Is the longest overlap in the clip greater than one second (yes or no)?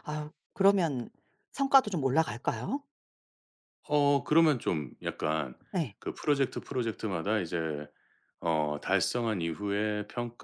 no